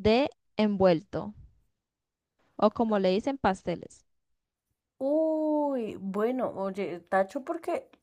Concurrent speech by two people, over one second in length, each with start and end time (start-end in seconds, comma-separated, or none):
none